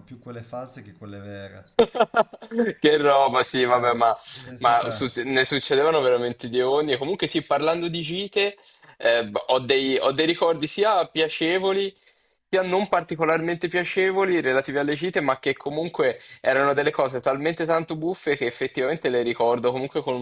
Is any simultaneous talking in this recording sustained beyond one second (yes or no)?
no